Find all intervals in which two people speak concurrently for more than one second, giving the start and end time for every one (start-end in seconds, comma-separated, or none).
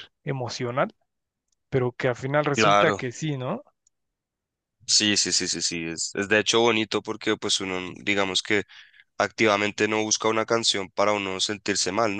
none